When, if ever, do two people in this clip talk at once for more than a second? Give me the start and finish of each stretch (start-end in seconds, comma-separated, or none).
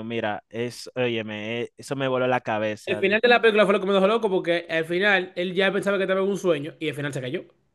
none